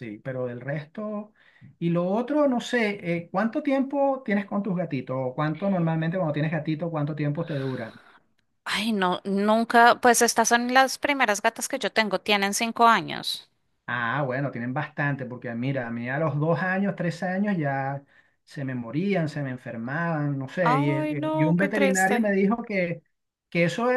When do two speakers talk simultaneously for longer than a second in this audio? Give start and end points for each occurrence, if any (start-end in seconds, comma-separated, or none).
20.6-22.2